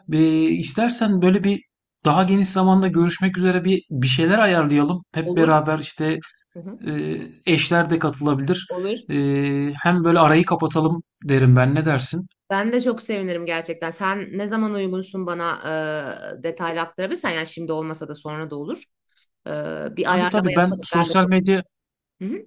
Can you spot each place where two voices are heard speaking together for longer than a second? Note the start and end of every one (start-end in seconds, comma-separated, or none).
20.1-21.3